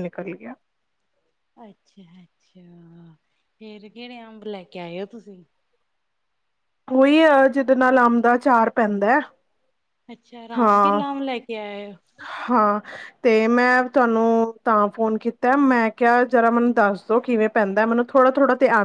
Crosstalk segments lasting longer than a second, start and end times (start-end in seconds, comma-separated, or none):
none